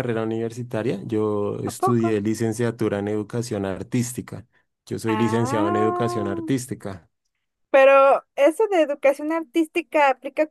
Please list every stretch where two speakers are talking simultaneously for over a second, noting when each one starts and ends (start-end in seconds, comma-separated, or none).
5.1-6.4